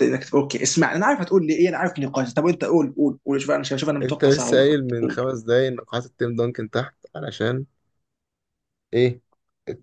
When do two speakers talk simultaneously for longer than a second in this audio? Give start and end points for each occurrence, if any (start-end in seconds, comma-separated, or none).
4.0-5.3